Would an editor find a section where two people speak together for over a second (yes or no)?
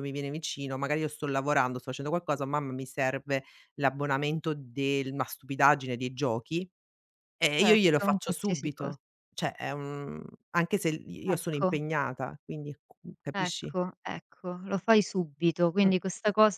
yes